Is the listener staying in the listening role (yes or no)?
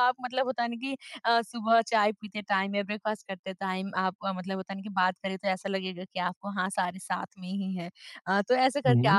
yes